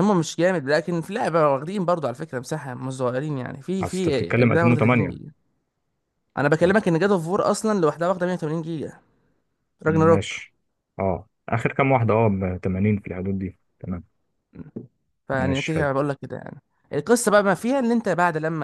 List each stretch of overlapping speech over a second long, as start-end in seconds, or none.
3.8-5.2